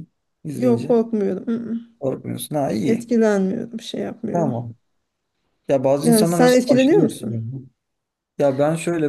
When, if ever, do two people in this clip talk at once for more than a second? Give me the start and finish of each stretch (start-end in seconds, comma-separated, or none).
6.0-7.5